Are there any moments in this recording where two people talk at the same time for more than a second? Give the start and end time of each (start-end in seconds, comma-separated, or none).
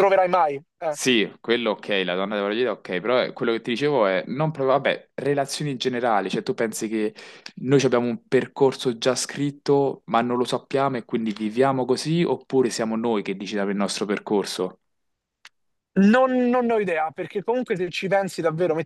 none